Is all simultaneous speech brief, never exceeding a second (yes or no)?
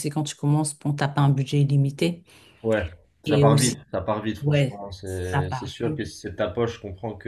no